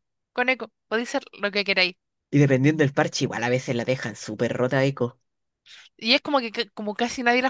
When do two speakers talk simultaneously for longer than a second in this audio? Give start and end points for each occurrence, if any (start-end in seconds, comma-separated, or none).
none